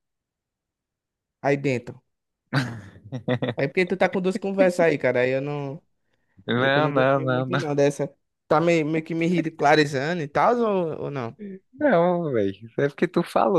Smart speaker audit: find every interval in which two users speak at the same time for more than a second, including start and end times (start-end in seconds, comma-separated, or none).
6.5-7.8